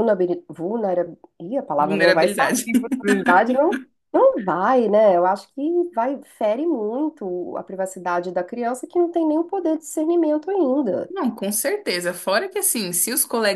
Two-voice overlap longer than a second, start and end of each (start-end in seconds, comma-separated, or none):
none